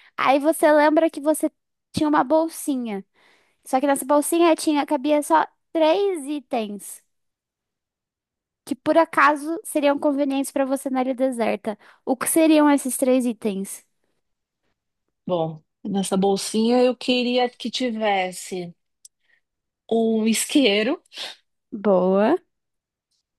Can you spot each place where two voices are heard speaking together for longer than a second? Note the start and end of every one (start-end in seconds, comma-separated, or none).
none